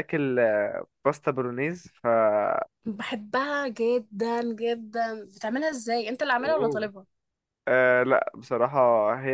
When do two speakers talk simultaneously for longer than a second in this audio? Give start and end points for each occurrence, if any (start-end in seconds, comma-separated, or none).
none